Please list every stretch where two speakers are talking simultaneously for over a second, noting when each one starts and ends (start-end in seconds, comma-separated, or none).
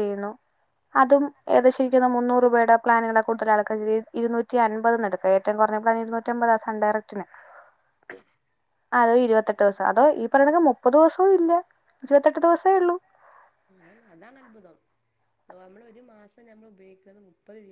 none